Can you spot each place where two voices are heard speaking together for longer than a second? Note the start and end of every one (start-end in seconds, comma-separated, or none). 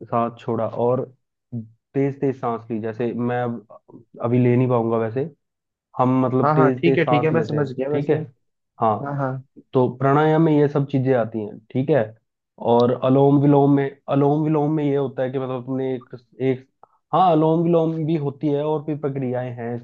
6.4-8.1